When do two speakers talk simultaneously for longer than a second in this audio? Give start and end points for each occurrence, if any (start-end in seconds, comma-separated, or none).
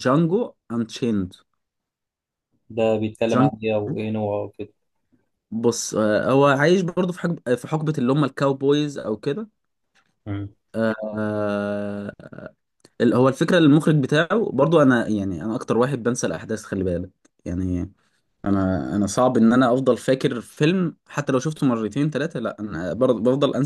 none